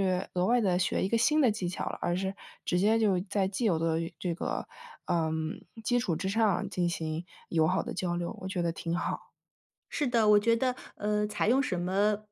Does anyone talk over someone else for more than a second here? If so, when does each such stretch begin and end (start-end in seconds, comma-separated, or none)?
none